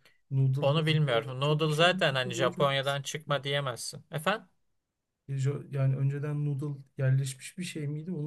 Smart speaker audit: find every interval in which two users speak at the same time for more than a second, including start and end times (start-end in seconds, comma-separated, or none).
0.6-3.0